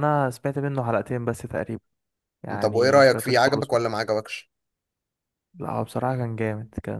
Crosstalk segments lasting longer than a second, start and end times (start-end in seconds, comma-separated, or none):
2.6-3.8